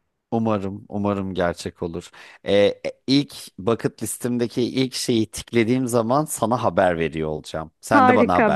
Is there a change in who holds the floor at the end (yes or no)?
yes